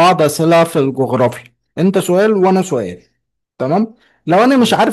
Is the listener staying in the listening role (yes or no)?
yes